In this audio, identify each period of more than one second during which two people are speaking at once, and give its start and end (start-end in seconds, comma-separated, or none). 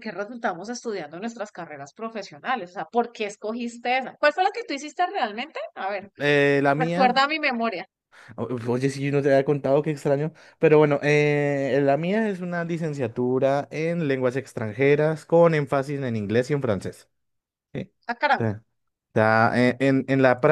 none